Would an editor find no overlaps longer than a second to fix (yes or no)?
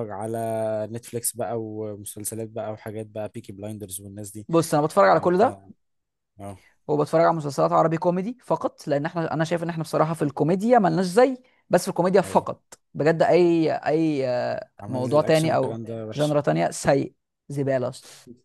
no